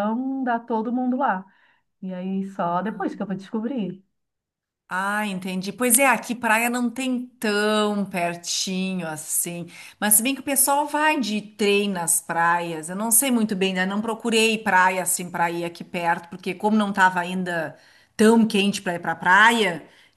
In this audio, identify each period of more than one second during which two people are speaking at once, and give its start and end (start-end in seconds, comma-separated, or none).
none